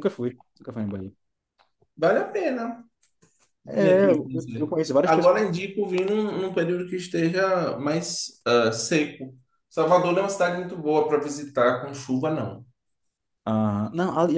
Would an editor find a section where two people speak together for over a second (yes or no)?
yes